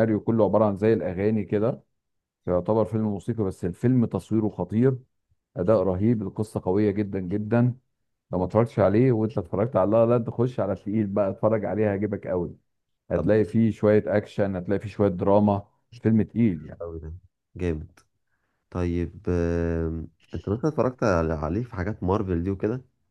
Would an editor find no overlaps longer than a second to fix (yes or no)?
yes